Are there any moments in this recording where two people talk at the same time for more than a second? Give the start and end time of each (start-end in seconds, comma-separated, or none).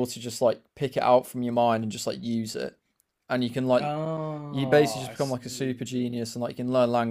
4.5-5.8